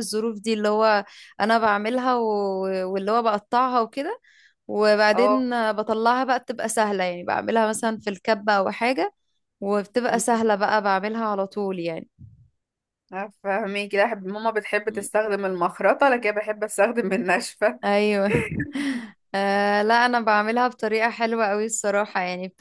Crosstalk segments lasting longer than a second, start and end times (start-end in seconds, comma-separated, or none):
none